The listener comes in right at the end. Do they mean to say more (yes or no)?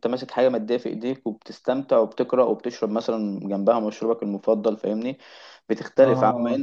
no